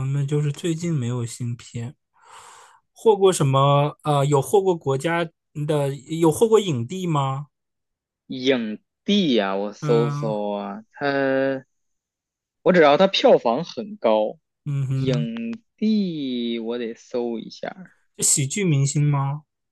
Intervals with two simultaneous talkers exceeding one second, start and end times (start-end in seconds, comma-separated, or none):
none